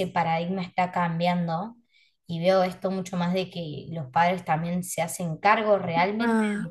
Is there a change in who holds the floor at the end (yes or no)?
no